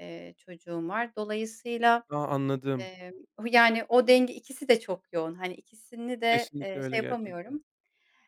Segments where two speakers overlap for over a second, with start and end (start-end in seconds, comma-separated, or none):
6.3-7.6